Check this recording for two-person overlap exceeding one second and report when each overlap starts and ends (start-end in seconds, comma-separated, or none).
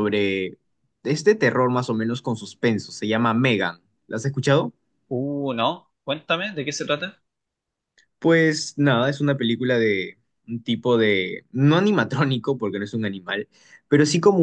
none